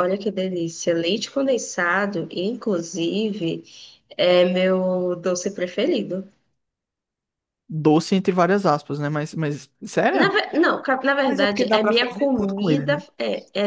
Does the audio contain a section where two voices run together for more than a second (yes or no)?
yes